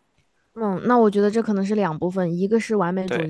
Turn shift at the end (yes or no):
no